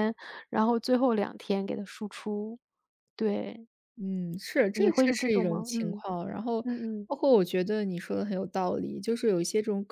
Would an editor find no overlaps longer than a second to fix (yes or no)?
no